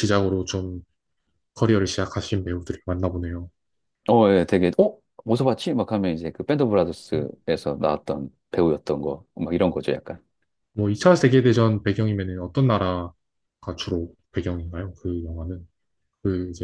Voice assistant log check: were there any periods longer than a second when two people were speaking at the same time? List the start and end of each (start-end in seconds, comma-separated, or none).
none